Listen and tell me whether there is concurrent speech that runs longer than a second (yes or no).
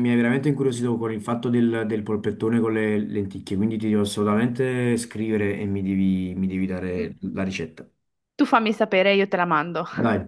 no